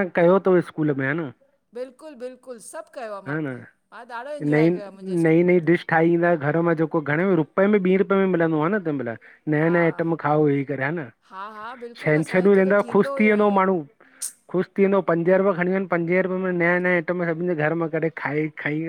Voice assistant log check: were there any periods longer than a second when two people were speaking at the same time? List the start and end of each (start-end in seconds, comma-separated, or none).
12.0-13.6